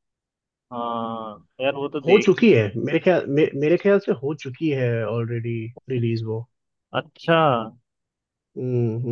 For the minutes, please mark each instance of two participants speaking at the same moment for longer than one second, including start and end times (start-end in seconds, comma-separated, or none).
none